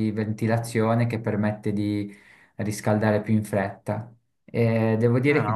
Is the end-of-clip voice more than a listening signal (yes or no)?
no